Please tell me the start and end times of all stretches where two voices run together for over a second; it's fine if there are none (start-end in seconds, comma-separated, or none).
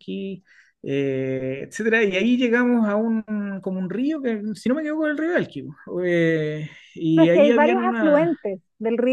7.2-8.4